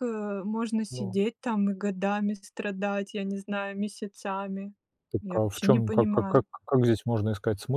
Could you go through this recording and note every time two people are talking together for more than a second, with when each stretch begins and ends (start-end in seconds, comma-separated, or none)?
5.2-6.5